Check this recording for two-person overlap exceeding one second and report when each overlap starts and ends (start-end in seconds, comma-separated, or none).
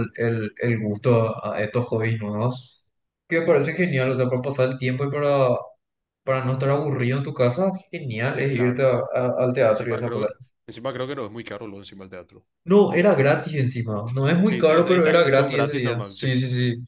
14.4-16.3